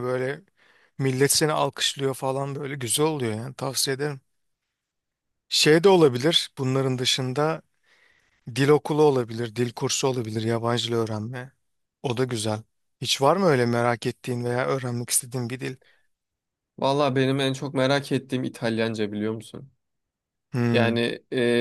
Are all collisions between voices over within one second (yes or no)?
yes